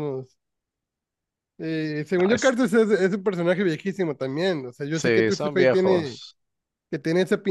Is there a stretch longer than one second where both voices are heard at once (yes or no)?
yes